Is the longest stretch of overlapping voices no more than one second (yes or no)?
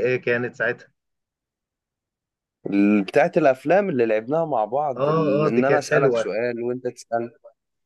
no